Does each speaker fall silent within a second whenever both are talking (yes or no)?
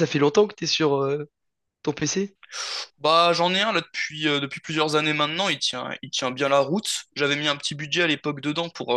yes